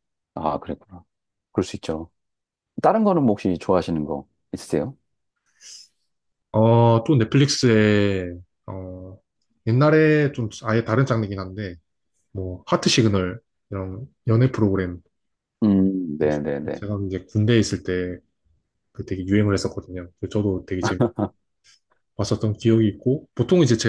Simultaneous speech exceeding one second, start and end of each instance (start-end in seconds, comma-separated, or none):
none